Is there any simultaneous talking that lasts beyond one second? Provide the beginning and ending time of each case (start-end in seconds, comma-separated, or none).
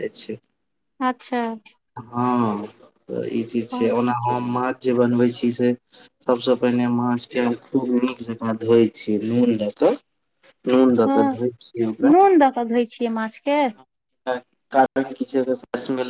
none